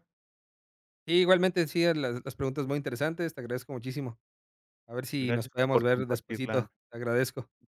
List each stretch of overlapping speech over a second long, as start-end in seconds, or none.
5.2-6.7